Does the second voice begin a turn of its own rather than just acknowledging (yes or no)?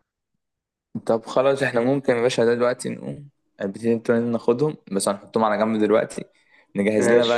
no